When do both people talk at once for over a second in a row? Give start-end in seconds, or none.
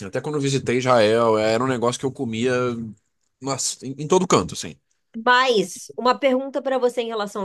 none